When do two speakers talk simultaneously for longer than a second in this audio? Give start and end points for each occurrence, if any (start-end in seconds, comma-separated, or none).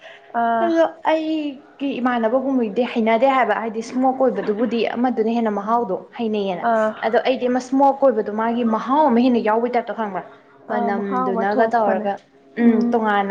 10.7-12.1